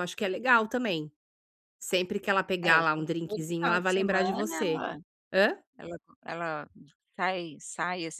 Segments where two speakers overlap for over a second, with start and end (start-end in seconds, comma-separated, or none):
2.6-4.8